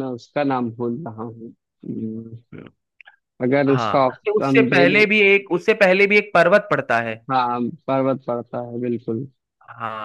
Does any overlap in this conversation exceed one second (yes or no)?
yes